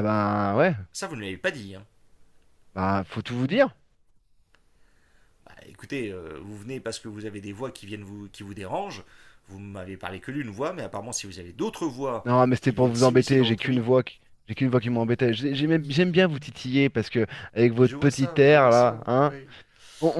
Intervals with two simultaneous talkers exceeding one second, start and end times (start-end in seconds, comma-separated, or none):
12.2-13.8, 17.8-19.3